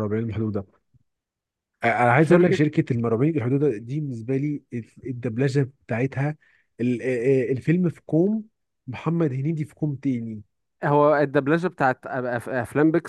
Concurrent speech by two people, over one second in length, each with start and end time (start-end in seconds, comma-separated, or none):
none